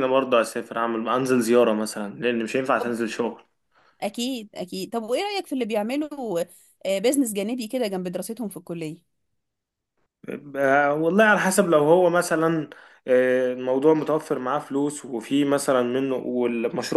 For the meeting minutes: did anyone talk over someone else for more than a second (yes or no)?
no